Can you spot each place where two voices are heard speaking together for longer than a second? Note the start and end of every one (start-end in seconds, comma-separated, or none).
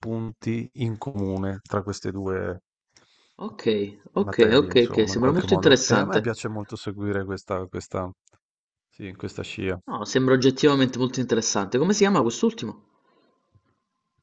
4.2-6.3